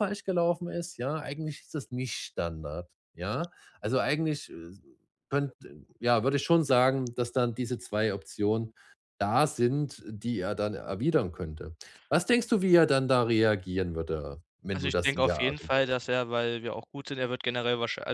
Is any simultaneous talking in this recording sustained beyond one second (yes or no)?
yes